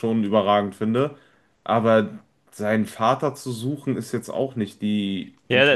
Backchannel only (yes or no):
no